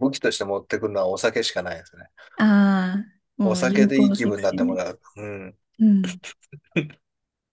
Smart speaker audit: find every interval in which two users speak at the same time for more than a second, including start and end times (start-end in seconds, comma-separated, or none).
3.4-4.8